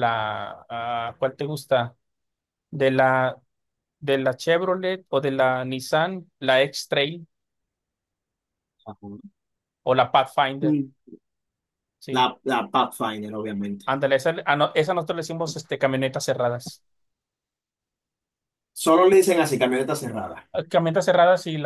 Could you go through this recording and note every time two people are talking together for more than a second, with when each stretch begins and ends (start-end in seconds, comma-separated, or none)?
none